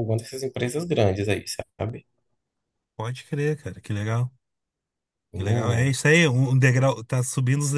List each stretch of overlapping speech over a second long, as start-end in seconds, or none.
none